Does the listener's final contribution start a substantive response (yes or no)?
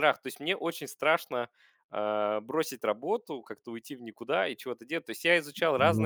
no